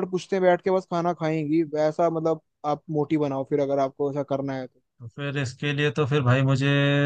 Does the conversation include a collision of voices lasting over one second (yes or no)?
no